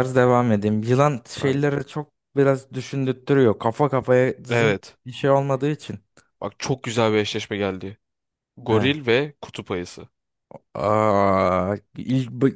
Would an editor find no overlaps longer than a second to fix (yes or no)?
yes